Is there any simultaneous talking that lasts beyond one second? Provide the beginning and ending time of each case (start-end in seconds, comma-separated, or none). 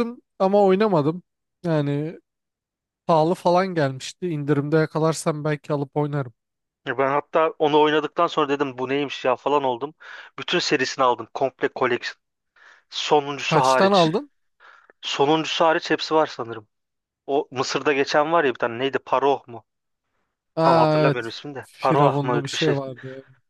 20.6-22.8